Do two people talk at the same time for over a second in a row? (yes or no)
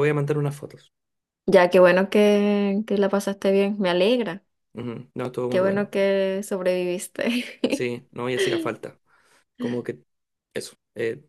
no